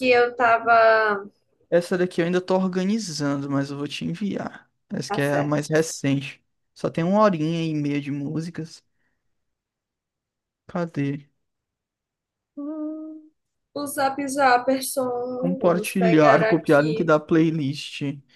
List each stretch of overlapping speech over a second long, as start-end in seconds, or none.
15.3-17.1